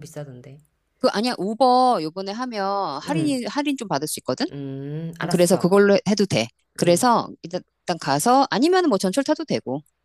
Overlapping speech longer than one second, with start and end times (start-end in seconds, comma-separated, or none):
none